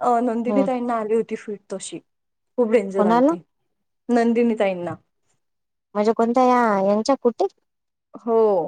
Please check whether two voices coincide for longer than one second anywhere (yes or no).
no